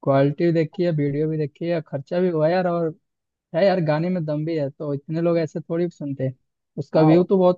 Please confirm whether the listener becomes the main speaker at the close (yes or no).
no